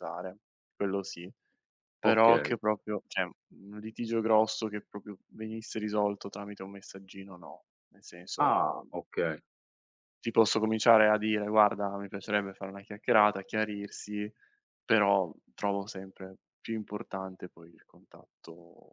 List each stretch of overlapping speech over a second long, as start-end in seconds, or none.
none